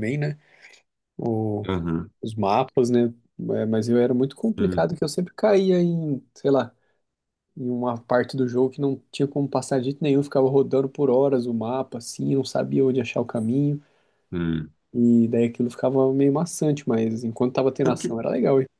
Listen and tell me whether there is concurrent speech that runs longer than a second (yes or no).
no